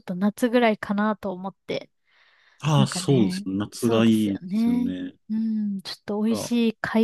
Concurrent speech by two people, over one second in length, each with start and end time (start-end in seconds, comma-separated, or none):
2.8-4.9